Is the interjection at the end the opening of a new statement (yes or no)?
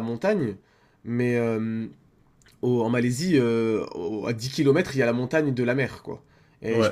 no